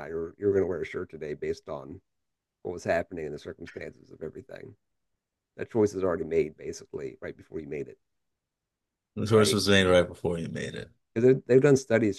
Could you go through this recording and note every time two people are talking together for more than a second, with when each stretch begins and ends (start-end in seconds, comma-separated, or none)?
none